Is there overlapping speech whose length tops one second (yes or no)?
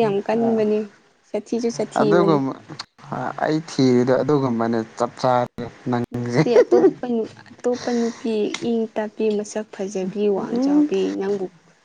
no